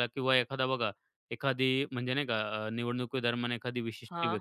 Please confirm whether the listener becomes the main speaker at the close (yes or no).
no